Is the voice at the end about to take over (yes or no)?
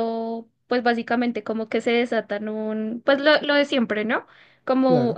no